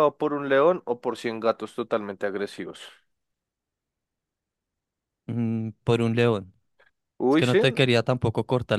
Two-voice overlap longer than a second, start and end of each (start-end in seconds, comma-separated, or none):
none